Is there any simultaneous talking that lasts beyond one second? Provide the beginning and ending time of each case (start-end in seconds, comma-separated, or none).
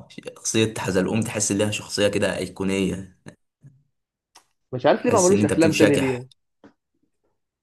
5.0-6.2